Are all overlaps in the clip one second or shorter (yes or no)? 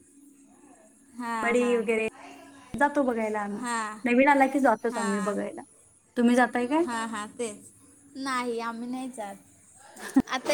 yes